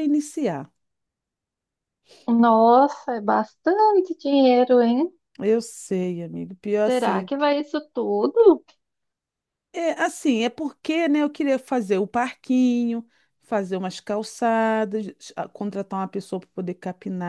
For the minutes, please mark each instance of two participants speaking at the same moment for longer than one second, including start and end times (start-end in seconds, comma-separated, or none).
none